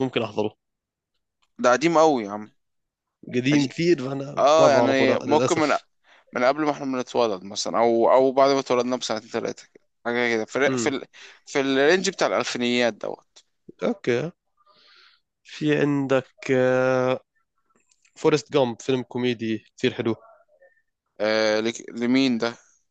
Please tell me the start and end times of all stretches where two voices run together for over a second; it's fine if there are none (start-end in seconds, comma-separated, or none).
4.4-5.8